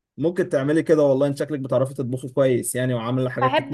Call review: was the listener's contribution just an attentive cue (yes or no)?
no